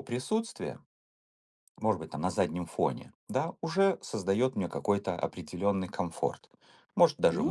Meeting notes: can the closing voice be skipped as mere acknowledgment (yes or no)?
yes